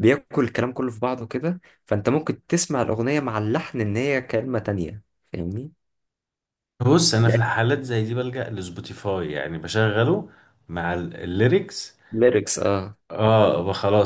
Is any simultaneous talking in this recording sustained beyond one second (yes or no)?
no